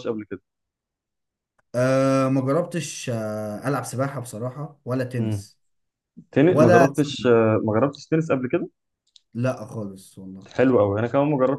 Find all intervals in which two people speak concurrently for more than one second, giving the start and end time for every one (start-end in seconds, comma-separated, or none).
none